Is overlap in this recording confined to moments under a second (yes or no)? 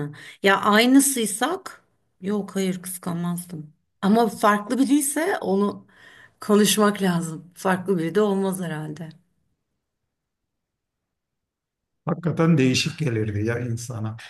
yes